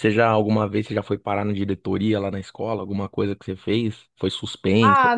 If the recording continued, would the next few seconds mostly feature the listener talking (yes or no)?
yes